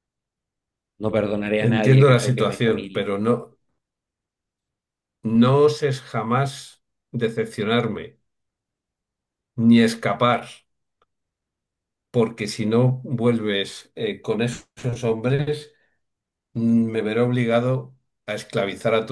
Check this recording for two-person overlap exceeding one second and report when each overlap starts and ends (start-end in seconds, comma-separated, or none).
1.6-3.0